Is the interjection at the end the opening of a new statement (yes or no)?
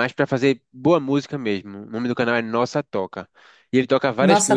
no